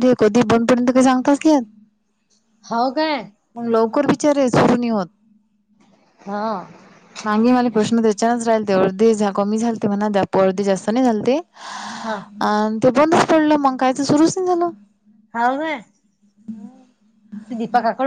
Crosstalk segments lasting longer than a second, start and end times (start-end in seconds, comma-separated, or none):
none